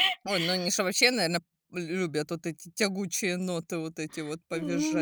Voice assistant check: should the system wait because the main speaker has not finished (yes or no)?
no